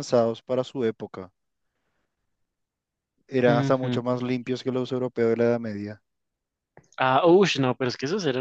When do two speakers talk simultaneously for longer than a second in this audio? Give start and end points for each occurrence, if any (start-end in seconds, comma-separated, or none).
none